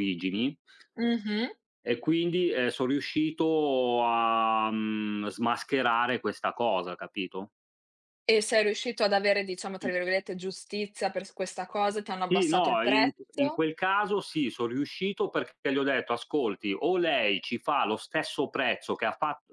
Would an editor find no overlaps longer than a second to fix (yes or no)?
no